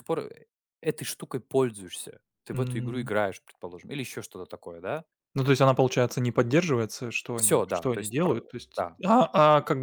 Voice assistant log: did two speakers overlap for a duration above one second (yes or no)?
yes